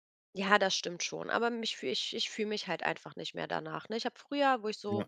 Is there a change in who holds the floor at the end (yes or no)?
no